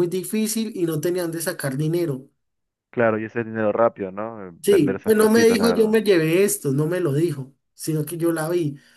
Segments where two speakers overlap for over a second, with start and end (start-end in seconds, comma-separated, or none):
4.6-6.0